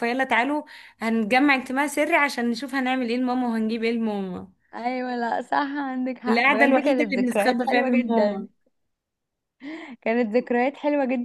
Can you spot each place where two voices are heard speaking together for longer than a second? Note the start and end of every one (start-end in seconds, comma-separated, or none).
6.3-8.5